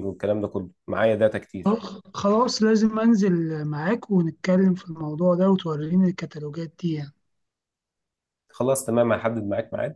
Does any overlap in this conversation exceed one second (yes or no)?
no